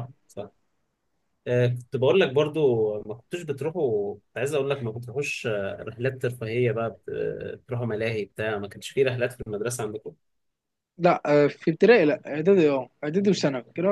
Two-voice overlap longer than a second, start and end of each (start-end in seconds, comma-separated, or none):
none